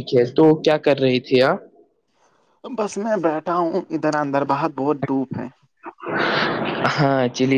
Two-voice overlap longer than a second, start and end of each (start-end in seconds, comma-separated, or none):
none